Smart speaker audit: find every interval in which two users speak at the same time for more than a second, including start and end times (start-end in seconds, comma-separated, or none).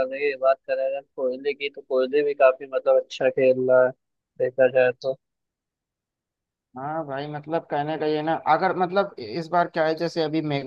none